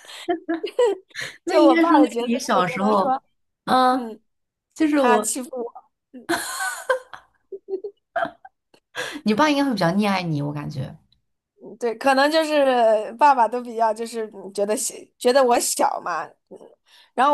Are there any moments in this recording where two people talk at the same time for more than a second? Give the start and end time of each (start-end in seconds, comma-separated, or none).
1.5-3.2